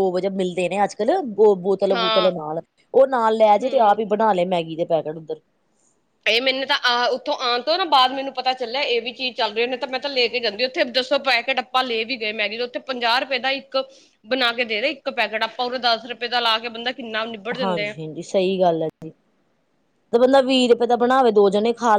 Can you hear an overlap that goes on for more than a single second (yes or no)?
no